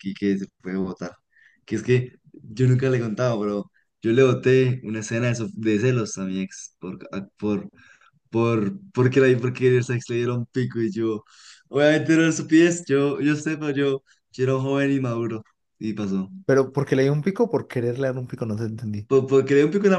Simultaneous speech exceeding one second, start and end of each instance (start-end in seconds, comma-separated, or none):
none